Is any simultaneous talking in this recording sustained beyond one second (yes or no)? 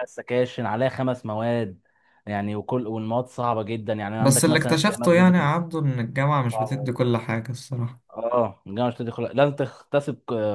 yes